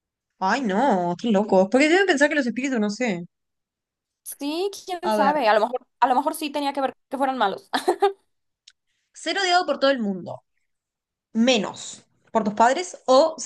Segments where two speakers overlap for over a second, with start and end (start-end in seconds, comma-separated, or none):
none